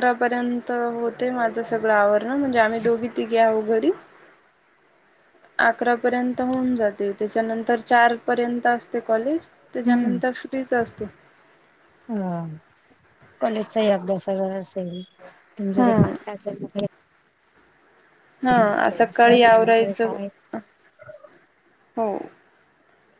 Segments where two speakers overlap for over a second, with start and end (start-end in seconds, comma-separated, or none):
18.8-20.1